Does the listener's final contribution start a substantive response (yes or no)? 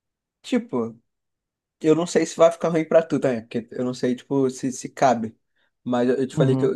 no